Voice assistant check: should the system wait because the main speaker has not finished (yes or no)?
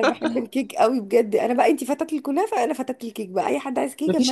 no